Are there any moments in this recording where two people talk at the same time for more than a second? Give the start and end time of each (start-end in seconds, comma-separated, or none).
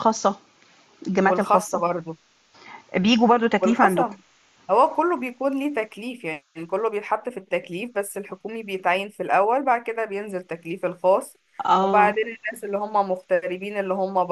none